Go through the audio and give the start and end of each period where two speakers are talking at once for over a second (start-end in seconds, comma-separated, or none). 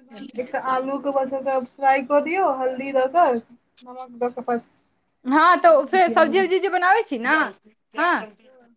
none